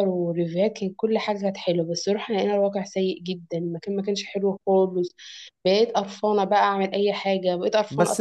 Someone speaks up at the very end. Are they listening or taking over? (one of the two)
taking over